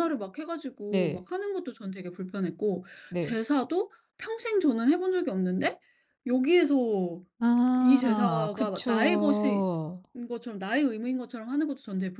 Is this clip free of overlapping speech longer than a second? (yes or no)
no